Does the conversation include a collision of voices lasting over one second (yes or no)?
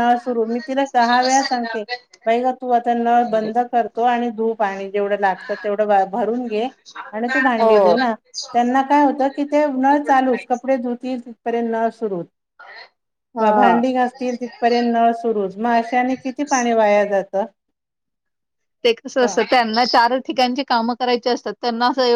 no